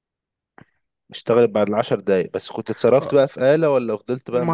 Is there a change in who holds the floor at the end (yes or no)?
yes